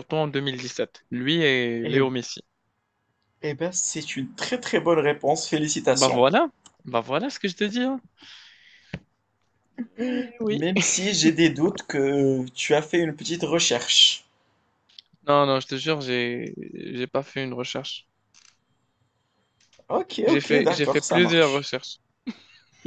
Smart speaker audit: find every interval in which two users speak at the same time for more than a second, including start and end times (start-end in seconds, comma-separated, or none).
20.3-21.7